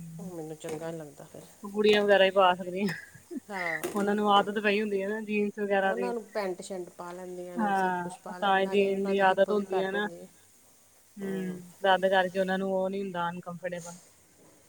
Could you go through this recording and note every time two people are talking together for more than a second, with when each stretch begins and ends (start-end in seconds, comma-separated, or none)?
7.6-9.9